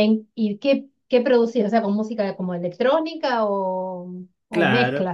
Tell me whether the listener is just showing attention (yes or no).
no